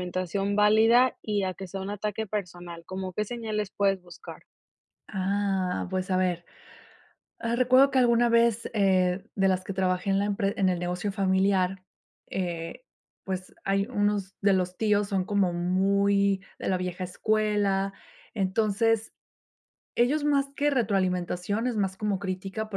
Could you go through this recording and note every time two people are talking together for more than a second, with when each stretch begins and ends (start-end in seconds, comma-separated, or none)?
none